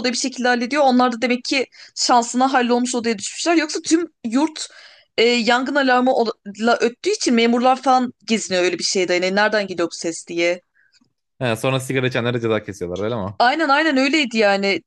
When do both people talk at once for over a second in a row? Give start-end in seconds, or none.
none